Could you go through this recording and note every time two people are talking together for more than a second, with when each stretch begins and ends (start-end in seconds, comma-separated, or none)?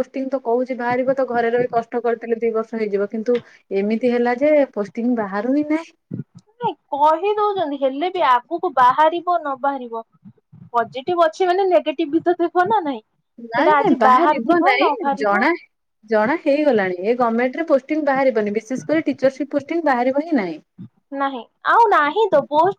13.6-15.4